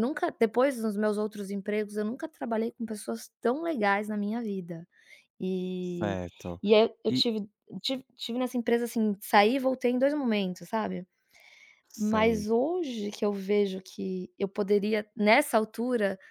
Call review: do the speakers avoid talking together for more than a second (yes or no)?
yes